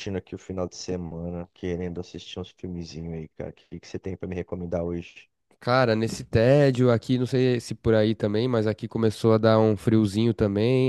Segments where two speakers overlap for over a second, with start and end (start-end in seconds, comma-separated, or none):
none